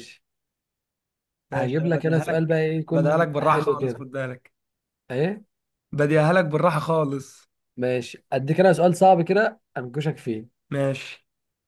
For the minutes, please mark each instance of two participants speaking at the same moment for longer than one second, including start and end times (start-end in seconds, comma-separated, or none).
1.5-4.0